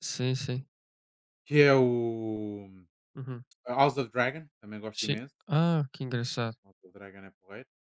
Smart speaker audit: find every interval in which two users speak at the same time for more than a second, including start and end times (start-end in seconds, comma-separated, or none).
none